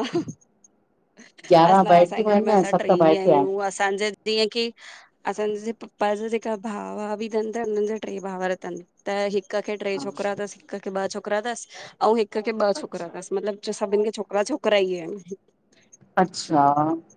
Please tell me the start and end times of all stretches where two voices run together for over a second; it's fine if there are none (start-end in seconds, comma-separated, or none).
1.7-3.4